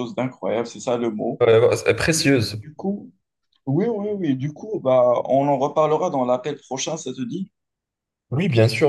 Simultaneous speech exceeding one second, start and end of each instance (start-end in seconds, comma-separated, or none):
none